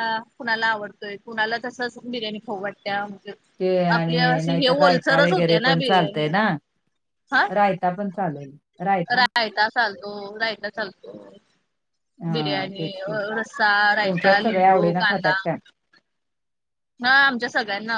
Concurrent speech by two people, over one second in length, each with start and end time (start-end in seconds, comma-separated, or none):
4.0-5.7, 14.1-15.3